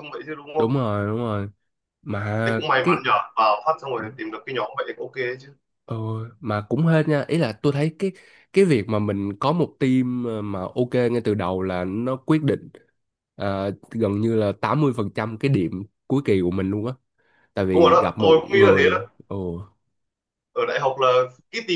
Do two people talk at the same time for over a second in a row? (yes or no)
yes